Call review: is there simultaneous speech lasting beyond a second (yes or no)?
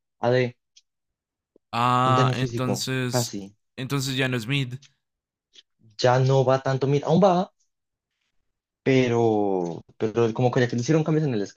yes